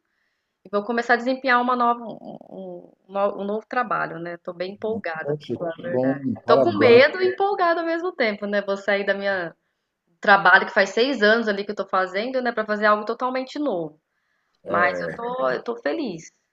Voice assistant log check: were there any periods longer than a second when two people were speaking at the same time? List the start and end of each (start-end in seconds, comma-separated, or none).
5.2-7.0